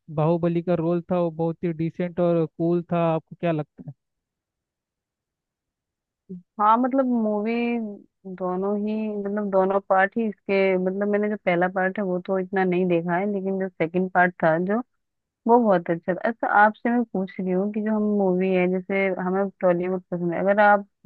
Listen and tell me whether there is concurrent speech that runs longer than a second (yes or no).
no